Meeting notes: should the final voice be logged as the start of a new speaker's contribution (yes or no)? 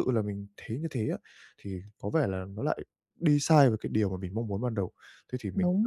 no